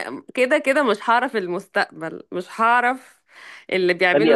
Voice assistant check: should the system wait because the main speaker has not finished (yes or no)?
yes